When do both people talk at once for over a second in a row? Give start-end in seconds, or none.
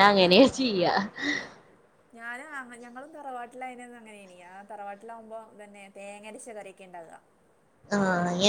none